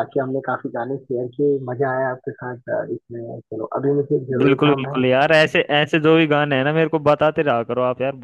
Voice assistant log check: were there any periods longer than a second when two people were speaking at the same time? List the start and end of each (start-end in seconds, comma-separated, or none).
none